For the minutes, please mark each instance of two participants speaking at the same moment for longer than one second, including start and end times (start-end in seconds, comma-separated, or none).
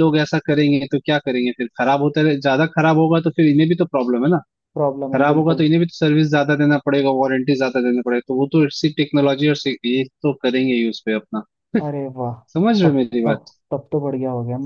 none